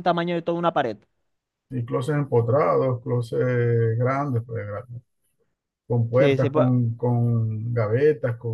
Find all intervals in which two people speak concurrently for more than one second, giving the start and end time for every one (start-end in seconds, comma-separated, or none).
none